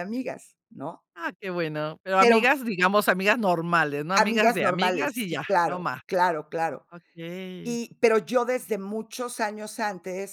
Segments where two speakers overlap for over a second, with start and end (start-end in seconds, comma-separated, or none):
4.2-6.0